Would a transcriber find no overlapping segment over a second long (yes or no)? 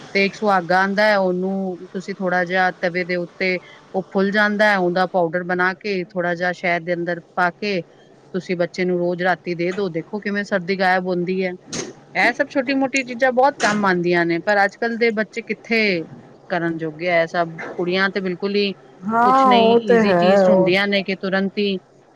no